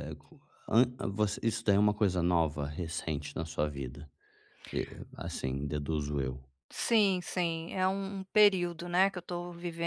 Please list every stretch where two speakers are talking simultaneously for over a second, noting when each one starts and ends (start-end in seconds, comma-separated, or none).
none